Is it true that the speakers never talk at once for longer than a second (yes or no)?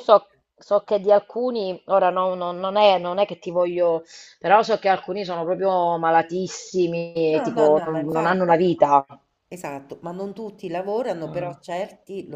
no